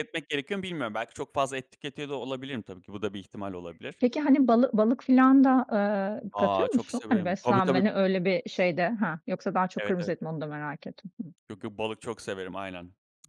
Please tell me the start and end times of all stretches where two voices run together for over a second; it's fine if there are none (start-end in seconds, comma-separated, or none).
6.3-7.8